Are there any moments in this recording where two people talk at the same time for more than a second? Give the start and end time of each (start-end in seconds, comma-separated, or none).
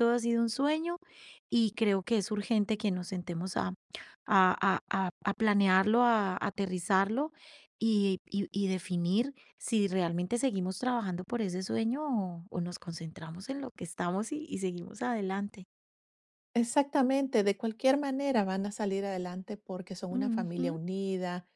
none